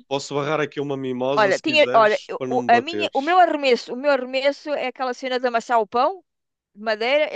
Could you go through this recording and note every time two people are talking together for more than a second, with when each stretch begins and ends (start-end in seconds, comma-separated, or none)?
1.3-3.4